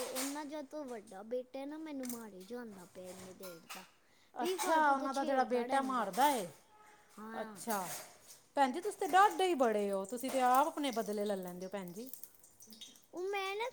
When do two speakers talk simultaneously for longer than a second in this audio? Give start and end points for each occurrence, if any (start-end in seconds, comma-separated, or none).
4.4-6.1